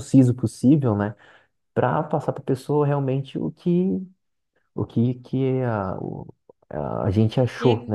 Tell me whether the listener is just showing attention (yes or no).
no